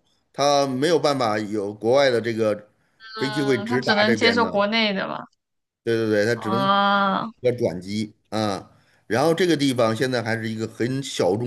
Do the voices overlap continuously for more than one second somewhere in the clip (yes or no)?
yes